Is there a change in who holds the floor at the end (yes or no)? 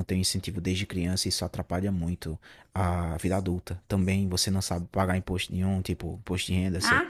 no